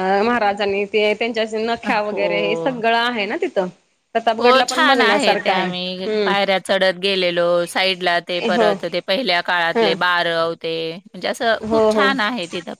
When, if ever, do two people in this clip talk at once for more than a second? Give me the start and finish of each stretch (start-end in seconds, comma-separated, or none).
4.4-6.3